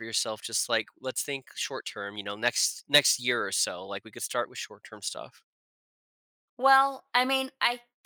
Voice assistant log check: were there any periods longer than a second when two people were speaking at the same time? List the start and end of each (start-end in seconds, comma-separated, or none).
none